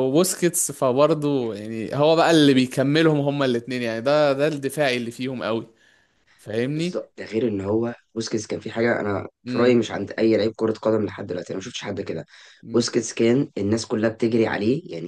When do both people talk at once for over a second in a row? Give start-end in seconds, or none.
none